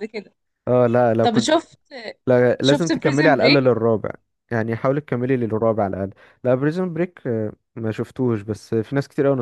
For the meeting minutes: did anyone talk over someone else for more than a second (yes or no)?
yes